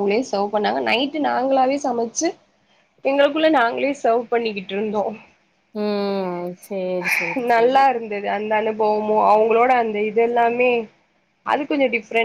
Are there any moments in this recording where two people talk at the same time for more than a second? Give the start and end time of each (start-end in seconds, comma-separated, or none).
none